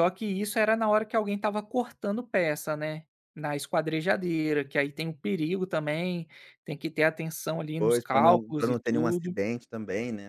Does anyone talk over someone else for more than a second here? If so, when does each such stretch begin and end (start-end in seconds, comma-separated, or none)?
7.8-9.3